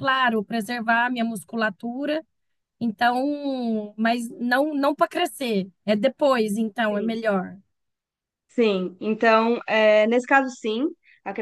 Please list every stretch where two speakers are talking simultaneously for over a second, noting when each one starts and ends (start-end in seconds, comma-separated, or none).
none